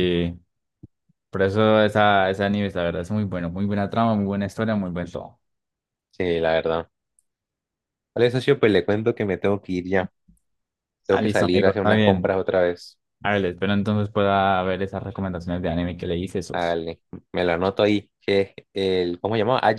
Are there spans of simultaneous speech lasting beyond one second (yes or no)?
yes